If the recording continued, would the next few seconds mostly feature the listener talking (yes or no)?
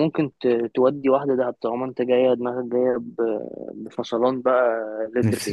yes